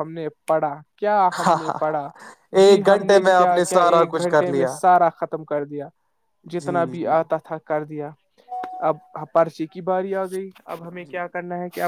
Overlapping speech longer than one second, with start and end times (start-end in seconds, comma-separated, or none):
2.6-4.7